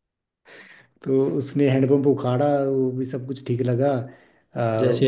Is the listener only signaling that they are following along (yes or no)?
no